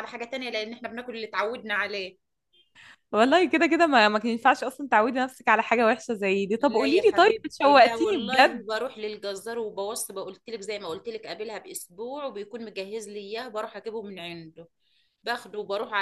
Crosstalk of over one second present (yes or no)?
yes